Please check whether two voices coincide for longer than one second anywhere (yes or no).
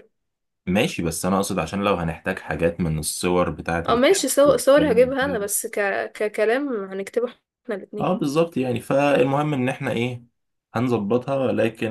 yes